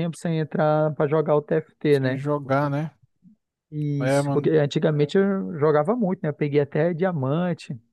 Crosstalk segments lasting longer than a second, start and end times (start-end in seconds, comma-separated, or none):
none